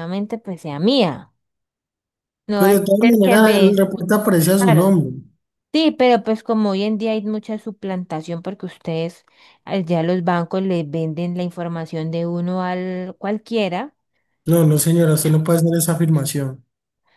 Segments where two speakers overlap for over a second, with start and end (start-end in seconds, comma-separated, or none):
2.5-3.9